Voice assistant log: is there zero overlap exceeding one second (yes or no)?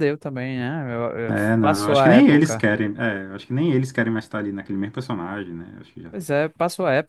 no